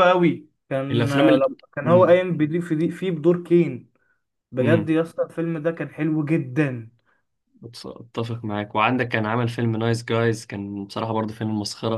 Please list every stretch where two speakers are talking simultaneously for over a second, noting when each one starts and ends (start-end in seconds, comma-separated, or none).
0.9-2.2